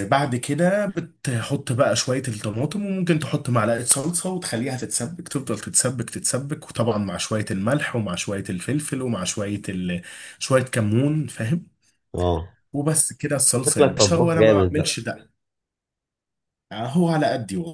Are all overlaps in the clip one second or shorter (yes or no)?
no